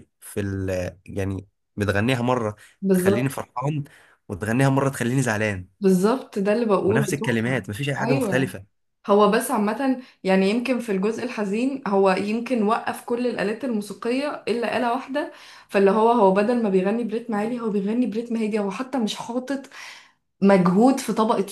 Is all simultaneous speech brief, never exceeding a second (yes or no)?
no